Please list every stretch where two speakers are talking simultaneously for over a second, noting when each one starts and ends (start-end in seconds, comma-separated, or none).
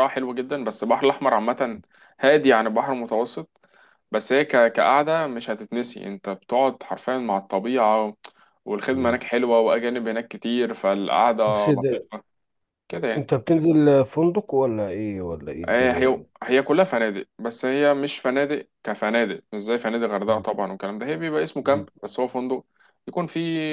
none